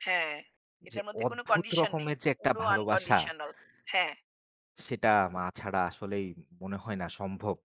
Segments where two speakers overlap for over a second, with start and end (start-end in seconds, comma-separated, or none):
0.9-3.2